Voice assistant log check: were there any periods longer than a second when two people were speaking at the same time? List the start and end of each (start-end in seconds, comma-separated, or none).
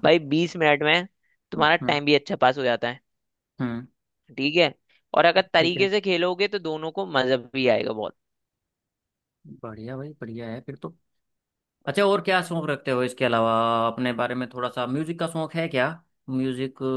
none